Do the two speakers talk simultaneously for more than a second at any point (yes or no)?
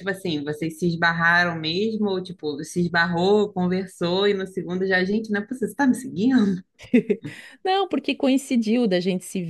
no